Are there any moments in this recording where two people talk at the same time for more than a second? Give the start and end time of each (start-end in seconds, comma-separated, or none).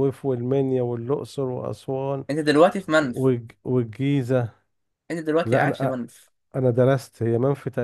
none